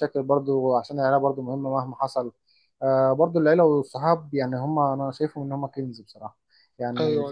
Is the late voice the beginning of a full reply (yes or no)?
no